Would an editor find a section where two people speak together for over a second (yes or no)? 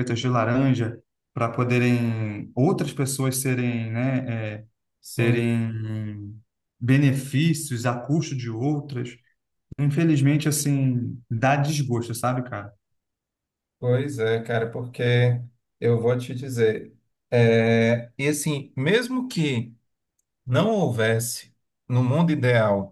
no